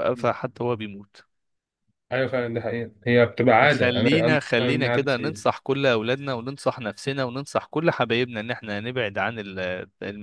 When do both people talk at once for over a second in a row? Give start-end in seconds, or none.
3.6-5.5